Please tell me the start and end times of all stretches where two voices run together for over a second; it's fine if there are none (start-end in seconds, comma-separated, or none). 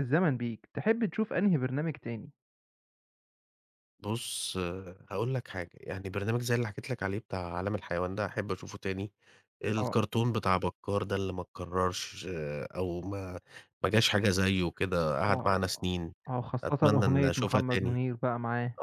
16.6-18.0